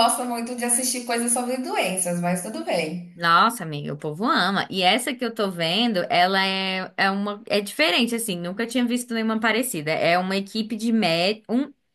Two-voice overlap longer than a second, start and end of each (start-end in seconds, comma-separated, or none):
none